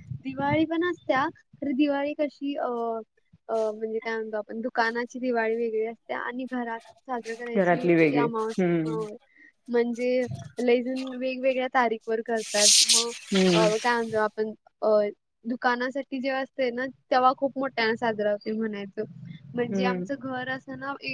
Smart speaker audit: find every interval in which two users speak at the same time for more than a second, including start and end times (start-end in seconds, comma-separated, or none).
7.5-8.9